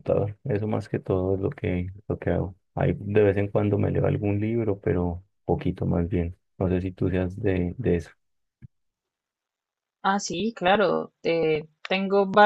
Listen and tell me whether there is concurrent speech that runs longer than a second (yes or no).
no